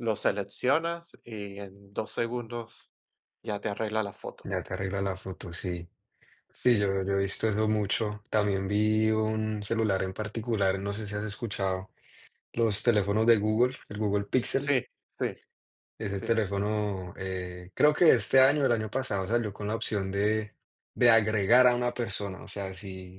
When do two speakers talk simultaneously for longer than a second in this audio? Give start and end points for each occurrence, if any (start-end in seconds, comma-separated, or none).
none